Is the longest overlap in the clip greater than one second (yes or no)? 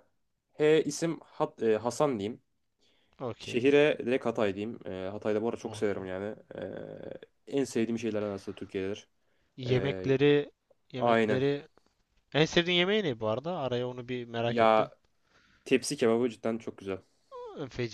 no